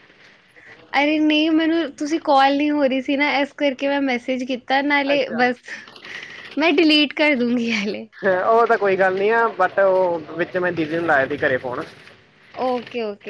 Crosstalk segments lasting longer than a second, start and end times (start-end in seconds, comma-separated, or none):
none